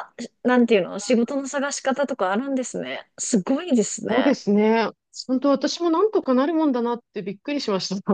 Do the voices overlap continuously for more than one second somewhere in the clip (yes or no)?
no